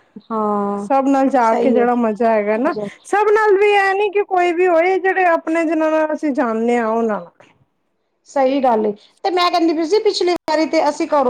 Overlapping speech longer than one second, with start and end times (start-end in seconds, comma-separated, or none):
none